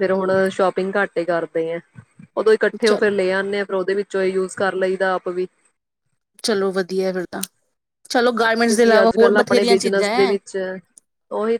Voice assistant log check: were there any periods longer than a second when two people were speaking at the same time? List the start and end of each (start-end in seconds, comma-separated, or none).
8.5-10.4